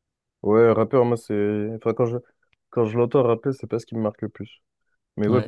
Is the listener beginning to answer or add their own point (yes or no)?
no